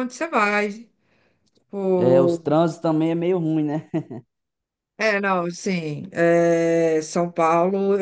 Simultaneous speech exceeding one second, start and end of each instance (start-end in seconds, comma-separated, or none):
none